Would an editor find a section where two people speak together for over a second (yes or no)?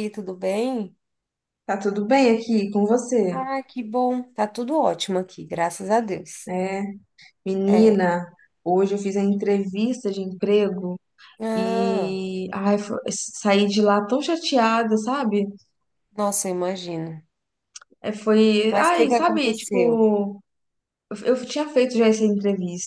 yes